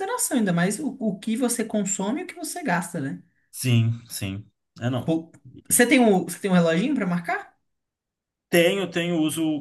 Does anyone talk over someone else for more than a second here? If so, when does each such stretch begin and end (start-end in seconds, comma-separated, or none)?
none